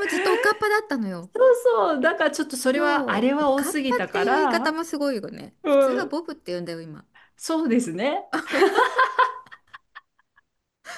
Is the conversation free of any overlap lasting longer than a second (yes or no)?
no